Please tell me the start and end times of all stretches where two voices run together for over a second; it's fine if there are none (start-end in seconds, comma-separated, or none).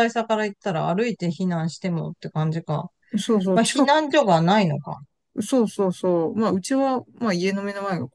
none